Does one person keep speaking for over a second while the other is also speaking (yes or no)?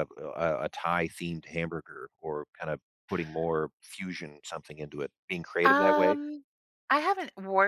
no